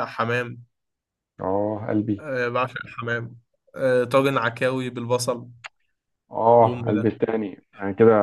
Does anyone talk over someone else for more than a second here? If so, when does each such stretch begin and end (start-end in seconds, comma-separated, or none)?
none